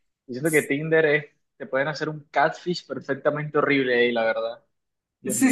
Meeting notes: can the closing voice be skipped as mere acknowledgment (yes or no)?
no